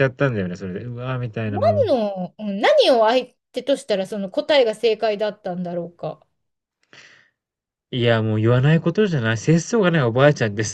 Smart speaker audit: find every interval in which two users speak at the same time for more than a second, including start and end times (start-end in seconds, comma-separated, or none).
none